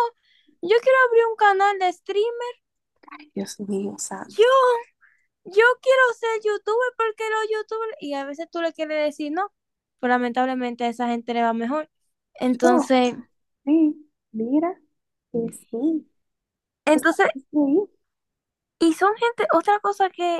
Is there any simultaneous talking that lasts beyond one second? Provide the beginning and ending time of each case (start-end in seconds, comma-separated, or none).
none